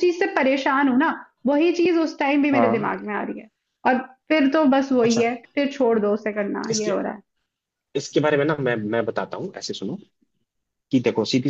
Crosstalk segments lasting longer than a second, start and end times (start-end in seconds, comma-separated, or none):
none